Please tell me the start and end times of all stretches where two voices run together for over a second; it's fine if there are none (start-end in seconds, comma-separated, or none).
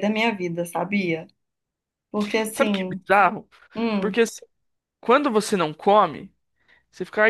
none